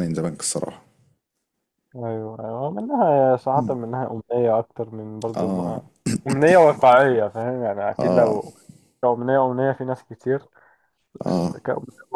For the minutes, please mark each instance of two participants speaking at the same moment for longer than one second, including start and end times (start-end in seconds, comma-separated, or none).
none